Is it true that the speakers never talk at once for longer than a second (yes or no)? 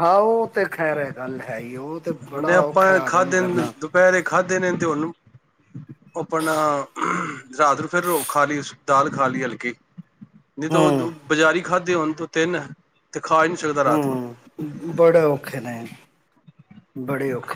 no